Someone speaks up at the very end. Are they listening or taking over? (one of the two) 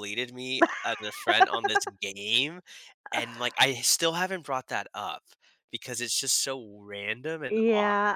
taking over